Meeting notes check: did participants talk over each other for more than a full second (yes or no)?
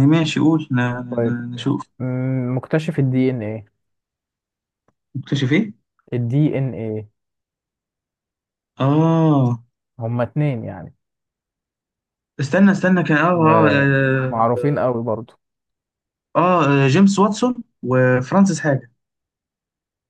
yes